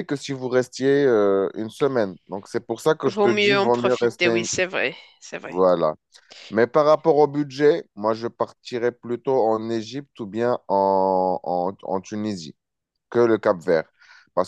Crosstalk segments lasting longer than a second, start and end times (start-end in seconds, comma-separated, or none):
3.0-4.5